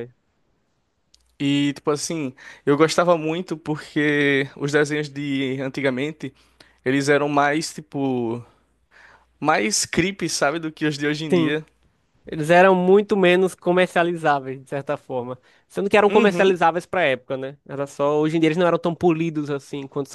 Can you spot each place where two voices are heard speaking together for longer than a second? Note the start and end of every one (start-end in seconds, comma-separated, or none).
none